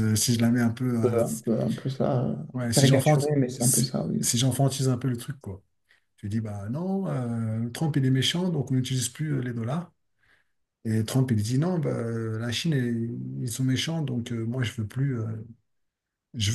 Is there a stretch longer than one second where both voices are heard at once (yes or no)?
yes